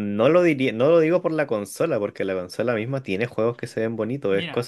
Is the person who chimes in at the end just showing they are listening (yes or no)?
no